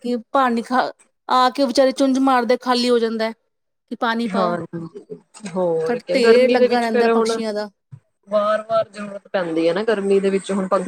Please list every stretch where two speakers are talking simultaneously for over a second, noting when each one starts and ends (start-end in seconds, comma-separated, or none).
5.9-7.4